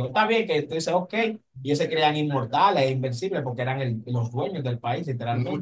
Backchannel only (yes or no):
no